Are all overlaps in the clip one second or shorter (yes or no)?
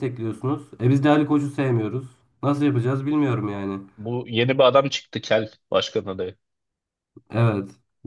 yes